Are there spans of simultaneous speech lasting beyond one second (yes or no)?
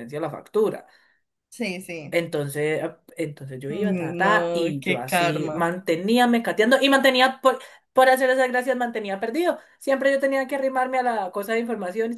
yes